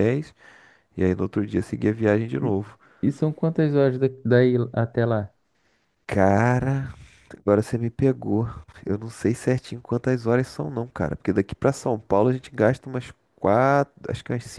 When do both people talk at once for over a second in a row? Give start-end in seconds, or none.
none